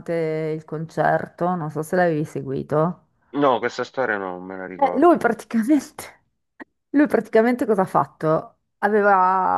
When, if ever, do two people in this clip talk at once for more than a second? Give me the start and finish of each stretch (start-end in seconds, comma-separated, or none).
none